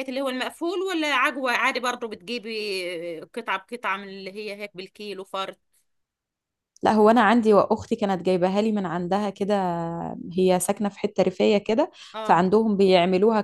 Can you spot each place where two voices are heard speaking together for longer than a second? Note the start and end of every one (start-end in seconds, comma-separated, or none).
none